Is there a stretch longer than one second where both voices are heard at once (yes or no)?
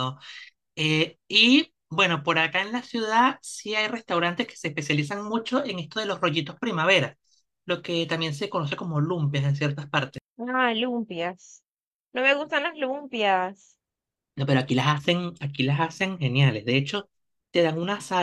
no